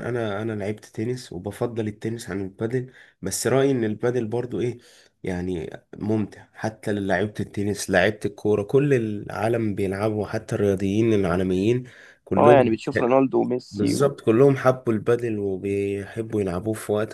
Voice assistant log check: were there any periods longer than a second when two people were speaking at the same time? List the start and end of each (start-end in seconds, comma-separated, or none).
none